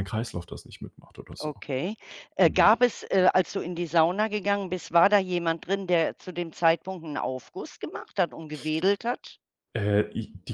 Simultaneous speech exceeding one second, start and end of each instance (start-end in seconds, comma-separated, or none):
none